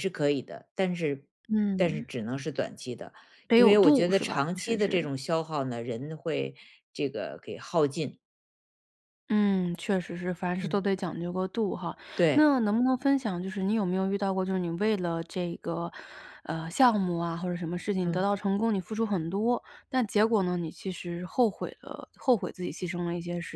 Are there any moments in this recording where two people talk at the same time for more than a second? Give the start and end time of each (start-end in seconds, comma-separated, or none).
3.5-5.1